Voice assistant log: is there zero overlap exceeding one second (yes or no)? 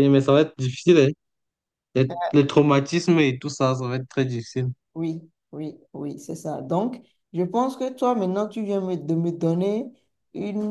yes